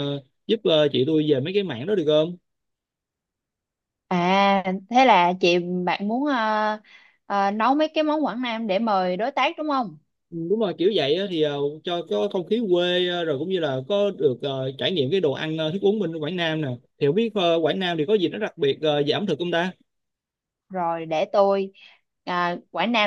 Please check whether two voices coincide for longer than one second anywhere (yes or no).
no